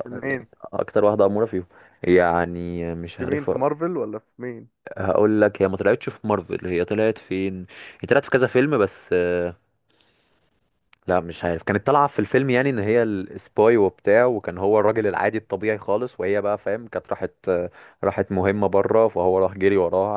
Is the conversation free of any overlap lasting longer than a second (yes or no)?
yes